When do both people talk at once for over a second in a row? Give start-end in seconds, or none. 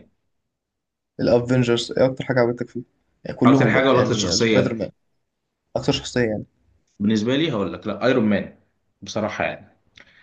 3.5-4.8